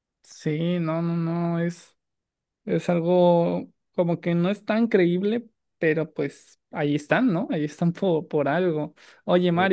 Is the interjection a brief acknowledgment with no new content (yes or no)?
yes